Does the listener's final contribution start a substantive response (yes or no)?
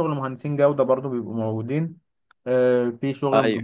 no